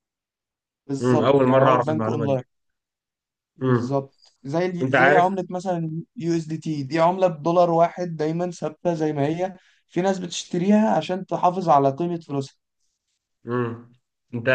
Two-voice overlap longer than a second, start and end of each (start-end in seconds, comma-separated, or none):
1.0-2.4